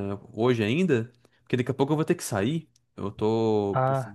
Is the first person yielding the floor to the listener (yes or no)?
no